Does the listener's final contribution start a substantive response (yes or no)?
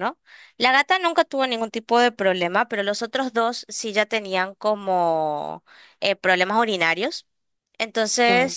no